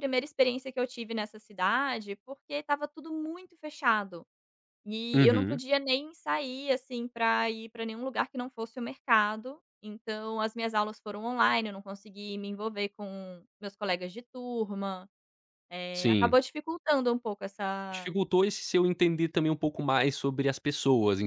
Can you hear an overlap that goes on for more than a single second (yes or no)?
no